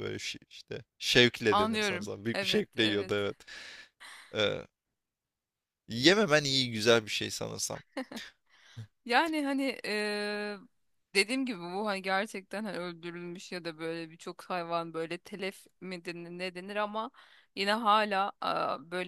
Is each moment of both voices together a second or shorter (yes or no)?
no